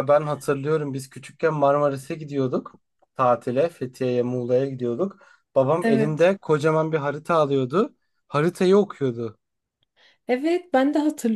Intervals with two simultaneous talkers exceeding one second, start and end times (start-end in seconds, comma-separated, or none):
none